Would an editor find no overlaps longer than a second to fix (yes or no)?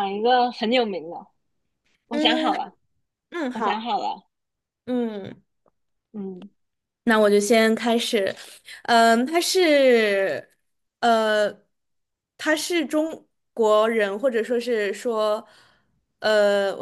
yes